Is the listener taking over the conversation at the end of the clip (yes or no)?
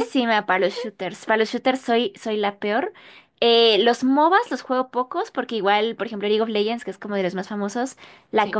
no